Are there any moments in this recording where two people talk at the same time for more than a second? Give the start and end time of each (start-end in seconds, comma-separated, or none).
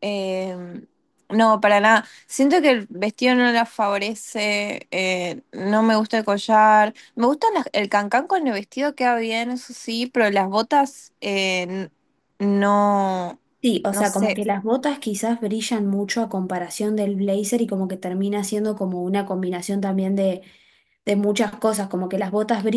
none